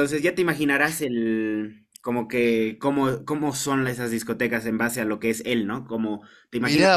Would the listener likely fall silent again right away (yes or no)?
no